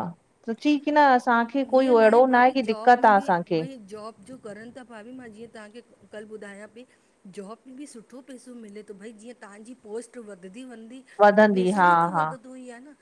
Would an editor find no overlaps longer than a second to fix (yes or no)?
no